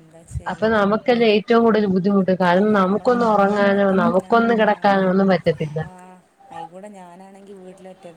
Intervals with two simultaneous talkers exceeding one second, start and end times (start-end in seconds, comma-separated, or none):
2.6-4.3